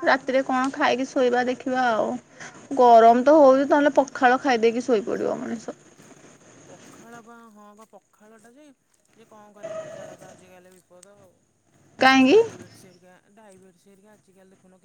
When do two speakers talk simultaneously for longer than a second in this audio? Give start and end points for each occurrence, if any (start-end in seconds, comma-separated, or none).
none